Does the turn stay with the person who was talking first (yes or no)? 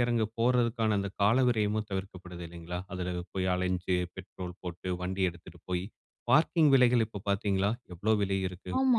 no